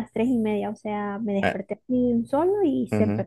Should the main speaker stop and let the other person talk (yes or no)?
yes